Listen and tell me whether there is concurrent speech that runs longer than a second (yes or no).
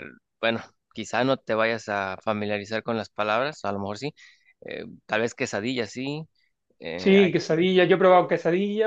no